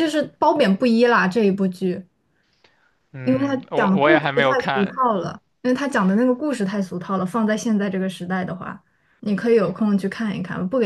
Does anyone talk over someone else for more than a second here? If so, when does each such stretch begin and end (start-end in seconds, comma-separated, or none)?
3.2-5.0